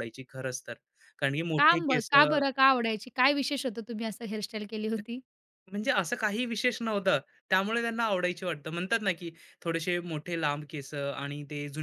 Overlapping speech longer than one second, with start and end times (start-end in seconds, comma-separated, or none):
none